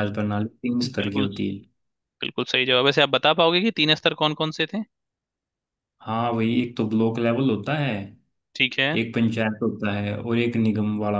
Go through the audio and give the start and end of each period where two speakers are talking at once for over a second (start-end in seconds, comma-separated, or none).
none